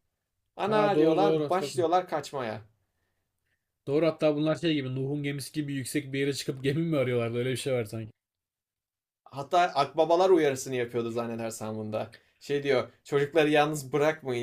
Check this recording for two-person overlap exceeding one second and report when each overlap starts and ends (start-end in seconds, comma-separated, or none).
0.7-1.9